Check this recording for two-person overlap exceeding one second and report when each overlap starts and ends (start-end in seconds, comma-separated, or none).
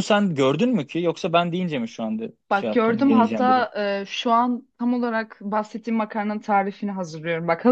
2.5-3.7